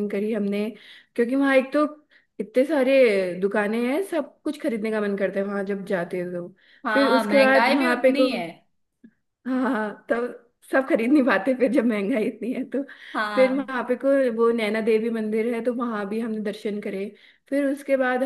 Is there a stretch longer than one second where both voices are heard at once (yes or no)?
yes